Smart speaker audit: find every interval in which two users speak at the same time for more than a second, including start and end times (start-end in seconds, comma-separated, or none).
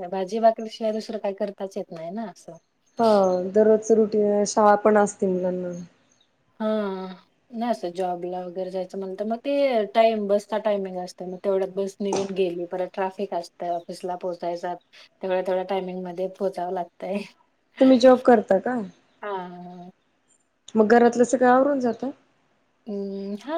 none